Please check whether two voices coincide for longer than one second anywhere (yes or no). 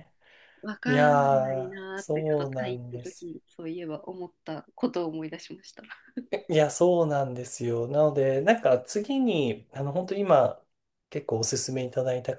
yes